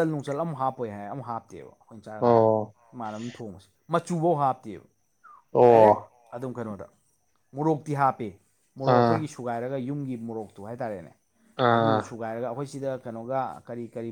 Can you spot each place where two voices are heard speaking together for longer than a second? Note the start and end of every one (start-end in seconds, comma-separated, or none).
none